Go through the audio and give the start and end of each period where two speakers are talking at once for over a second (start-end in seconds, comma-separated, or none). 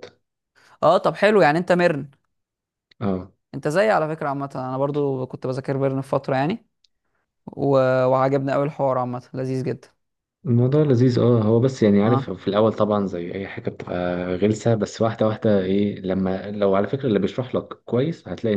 none